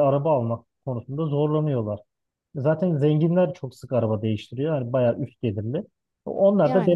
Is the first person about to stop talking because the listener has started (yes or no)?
no